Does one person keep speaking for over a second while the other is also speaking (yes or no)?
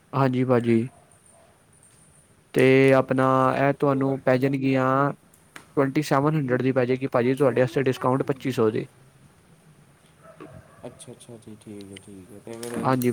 yes